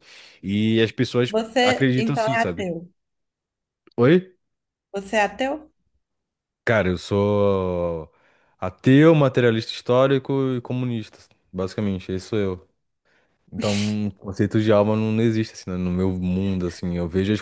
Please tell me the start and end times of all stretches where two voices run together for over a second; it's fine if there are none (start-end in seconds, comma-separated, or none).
1.3-2.7